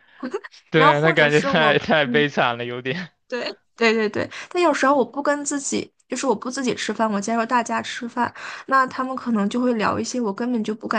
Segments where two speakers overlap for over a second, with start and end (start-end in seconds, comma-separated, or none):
0.7-2.3